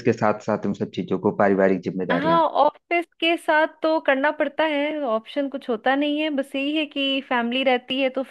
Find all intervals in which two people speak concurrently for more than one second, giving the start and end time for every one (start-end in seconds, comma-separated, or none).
none